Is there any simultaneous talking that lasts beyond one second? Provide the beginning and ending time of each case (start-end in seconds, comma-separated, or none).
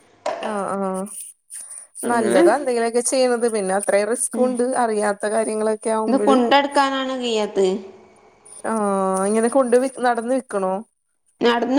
none